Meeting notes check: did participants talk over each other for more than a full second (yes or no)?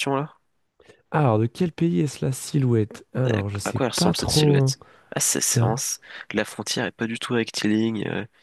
yes